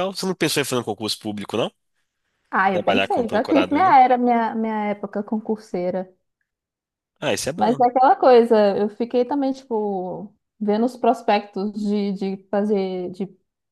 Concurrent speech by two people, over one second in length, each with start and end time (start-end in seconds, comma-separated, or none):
2.7-4.0